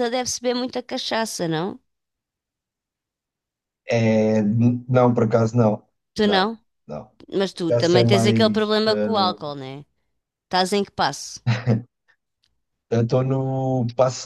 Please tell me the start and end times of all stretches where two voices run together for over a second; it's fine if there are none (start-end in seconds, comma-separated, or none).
7.5-9.5